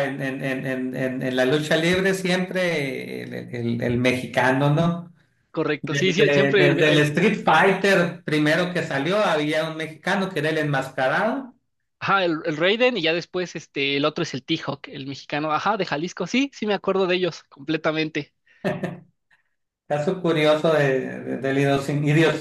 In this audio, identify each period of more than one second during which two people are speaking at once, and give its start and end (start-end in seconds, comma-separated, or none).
5.8-7.1